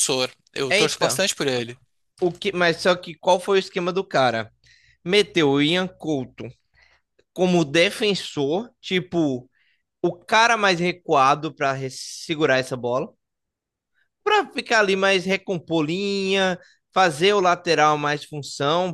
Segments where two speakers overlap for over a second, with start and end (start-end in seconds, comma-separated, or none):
none